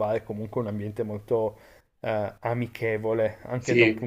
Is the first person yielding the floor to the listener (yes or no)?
no